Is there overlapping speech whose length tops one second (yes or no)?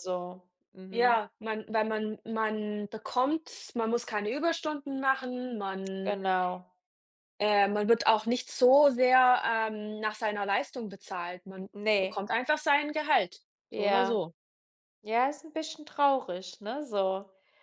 no